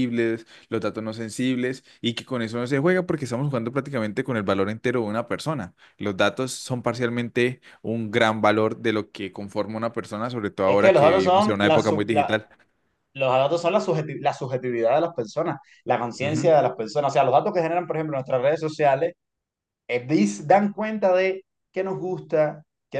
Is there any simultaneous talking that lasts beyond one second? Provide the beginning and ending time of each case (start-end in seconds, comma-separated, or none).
10.6-12.4